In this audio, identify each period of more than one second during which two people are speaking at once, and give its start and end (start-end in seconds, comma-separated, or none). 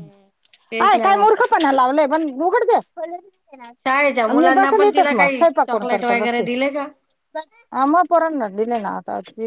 4.4-6.5